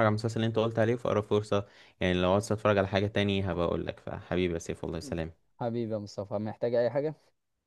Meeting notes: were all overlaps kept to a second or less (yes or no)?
yes